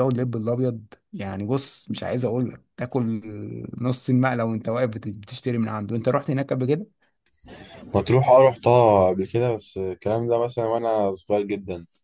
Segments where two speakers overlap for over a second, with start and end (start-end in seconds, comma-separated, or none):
none